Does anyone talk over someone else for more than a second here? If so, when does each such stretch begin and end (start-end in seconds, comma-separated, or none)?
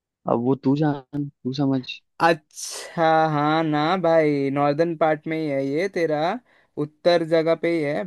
none